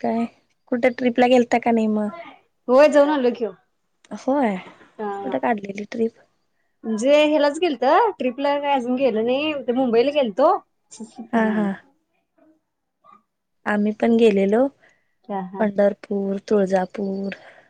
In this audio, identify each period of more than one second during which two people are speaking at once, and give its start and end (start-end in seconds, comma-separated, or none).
none